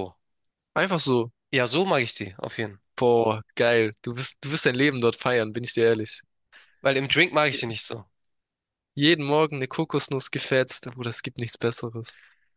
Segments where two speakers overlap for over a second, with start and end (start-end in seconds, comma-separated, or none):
none